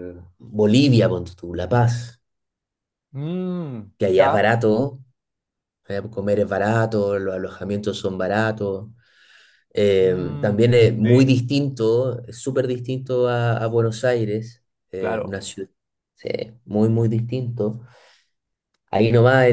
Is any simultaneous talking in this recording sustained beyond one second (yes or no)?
yes